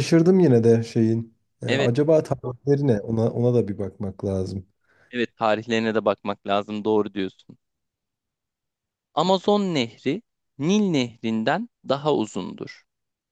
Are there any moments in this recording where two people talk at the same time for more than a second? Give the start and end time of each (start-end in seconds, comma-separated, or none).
none